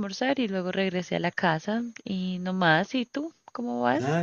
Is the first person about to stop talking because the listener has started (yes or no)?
yes